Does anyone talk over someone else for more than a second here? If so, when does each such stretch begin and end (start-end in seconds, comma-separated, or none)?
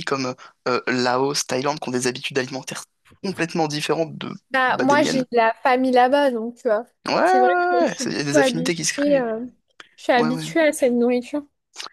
7.2-9.3